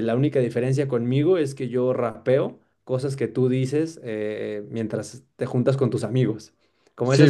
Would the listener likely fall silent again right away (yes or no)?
yes